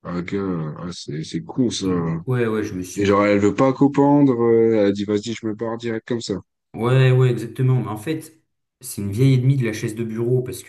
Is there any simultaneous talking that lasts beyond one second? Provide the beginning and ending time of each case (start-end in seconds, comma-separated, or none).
none